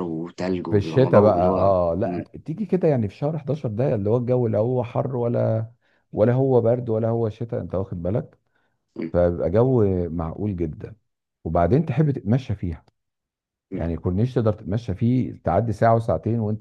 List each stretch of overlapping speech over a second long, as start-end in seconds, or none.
0.7-2.2